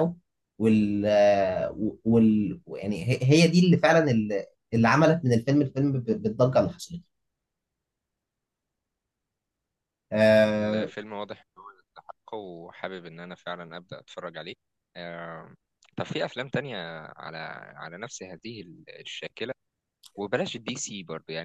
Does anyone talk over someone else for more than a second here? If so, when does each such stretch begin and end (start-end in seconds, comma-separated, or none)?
none